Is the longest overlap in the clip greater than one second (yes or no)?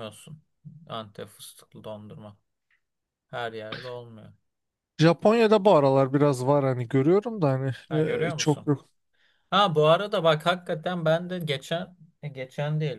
no